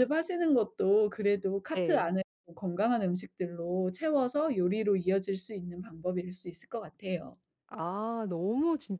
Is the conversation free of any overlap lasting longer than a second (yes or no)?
yes